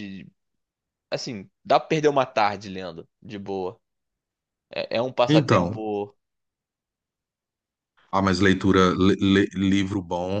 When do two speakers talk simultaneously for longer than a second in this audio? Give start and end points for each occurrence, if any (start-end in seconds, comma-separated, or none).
none